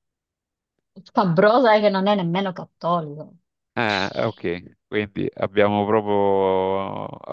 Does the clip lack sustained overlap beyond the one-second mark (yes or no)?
yes